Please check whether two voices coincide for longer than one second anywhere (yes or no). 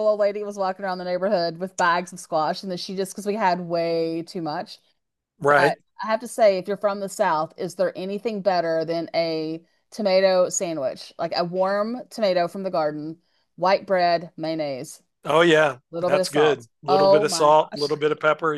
yes